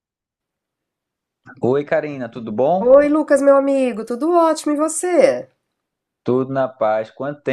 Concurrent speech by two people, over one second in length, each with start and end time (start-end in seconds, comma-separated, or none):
none